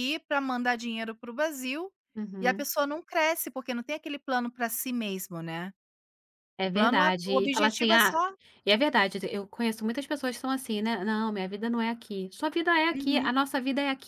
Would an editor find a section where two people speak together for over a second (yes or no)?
yes